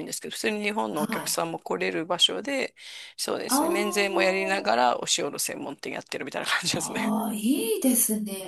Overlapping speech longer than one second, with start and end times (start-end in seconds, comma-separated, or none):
3.5-4.7